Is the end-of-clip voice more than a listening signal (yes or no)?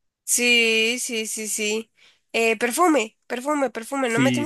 yes